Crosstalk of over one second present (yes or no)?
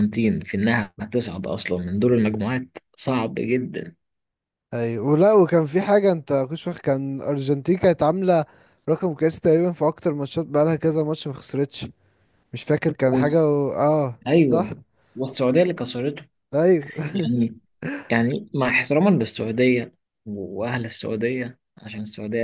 no